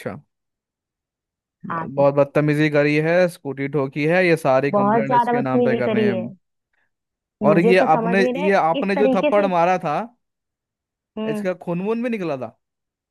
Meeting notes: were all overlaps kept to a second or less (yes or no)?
no